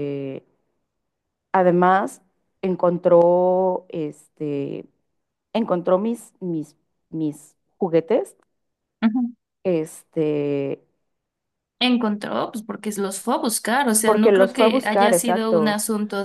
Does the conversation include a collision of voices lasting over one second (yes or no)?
yes